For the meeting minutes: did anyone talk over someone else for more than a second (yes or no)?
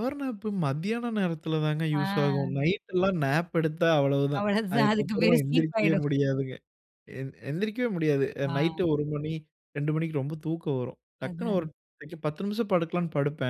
yes